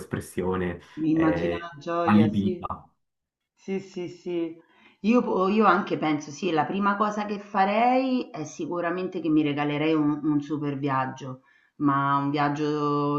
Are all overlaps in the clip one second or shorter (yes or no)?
no